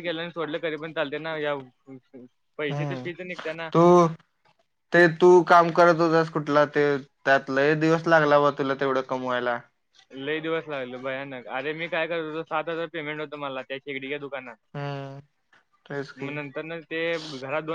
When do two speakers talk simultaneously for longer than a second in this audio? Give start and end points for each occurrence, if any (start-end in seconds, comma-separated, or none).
none